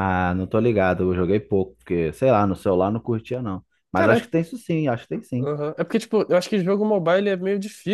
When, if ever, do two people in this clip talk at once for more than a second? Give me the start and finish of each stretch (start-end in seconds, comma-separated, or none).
none